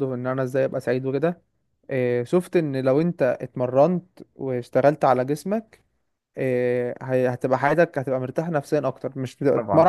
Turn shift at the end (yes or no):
no